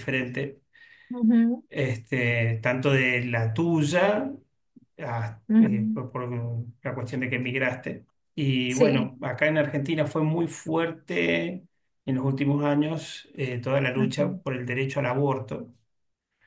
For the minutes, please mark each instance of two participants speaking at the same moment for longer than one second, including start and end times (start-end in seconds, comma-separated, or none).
none